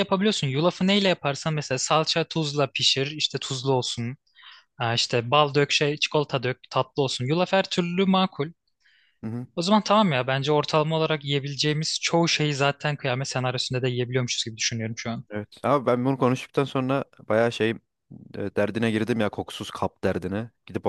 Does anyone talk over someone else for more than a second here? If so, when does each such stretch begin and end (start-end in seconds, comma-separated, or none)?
none